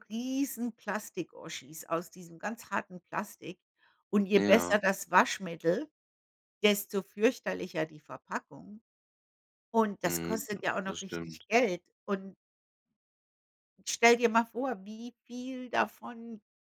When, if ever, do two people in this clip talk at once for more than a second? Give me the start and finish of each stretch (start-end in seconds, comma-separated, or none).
10.1-11.4